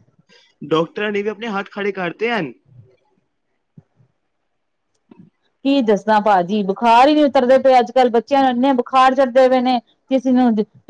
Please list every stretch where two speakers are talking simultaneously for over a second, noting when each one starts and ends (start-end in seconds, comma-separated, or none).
none